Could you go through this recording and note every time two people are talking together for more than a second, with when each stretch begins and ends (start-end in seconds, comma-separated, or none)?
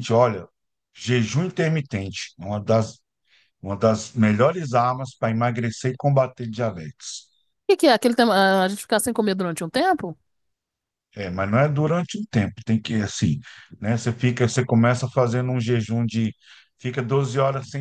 none